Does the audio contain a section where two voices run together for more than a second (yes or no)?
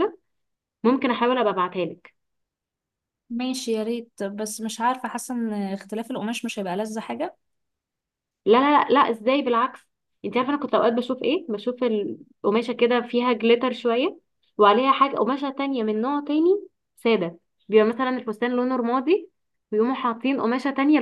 no